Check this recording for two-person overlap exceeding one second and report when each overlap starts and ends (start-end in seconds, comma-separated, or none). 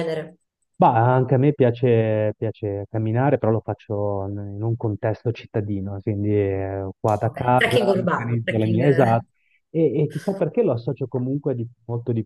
7.3-8.8